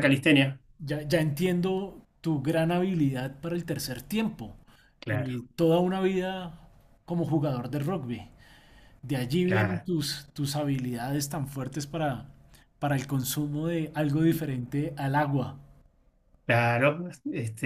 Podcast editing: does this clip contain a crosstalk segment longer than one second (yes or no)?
no